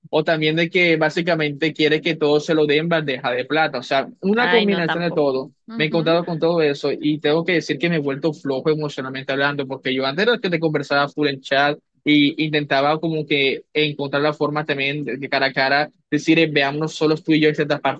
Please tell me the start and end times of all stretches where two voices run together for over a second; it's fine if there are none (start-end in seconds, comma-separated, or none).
4.4-6.2